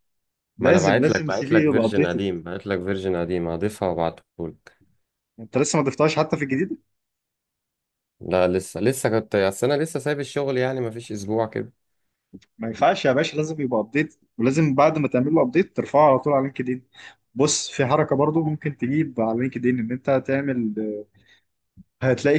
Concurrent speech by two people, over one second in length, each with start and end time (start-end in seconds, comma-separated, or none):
0.6-2.2